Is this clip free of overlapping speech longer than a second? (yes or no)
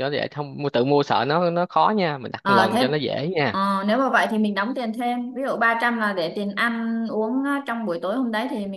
yes